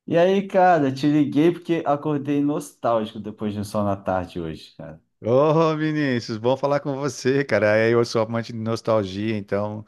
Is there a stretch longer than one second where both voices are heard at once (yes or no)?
no